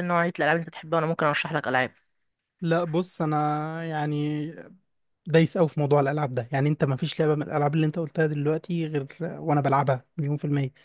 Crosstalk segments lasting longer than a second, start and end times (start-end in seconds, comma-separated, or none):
none